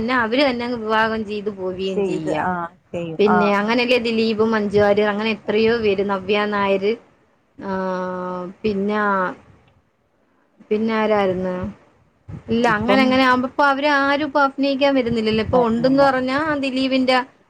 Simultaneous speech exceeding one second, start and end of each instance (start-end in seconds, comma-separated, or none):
none